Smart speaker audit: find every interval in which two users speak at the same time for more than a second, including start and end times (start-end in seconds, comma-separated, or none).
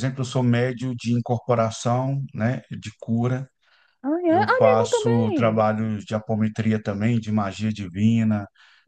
4.3-5.6